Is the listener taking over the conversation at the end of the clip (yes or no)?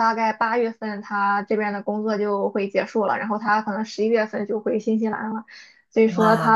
no